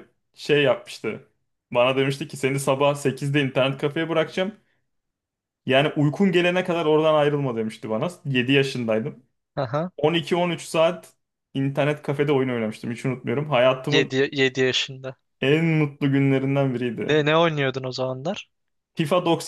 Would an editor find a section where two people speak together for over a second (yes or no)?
no